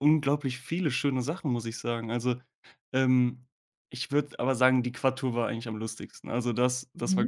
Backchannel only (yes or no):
yes